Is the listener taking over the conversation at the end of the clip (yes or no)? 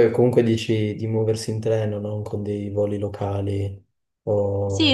yes